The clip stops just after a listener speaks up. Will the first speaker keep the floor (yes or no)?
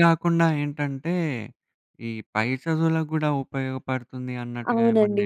no